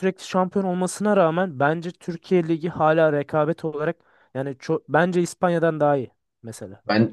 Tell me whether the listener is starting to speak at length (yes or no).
yes